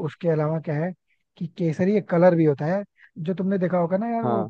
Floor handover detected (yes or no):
no